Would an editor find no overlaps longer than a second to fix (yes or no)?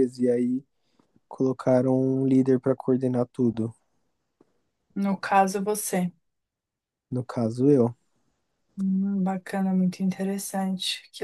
yes